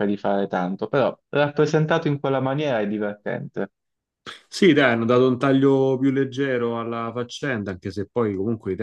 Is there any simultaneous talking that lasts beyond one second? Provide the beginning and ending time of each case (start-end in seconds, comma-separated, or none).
none